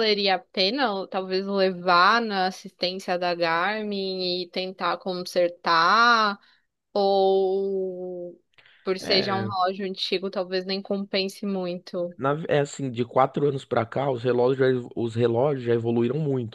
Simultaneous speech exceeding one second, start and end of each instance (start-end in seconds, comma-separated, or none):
none